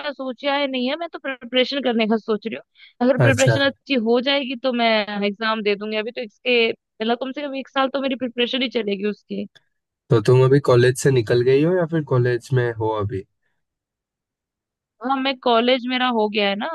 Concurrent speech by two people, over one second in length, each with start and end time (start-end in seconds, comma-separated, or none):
none